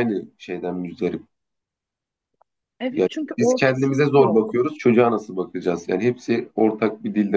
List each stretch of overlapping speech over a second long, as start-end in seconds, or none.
2.9-4.6